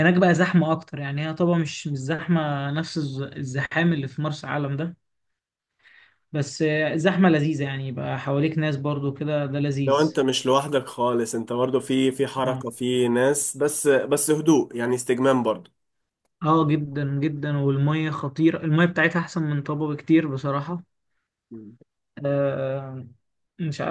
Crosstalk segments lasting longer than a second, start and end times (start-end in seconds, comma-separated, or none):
none